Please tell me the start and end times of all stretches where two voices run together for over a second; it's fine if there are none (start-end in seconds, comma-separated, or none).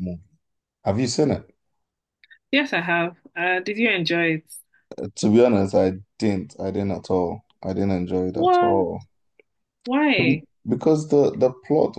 none